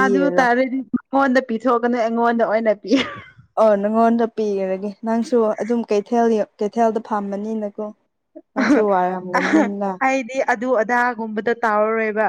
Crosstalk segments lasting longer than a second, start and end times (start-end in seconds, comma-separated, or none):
none